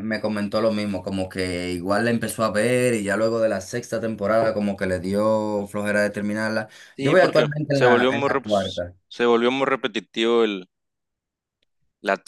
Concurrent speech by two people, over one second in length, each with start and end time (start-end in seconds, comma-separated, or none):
7.0-8.9